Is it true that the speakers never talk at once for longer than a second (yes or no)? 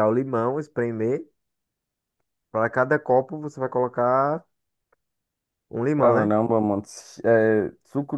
yes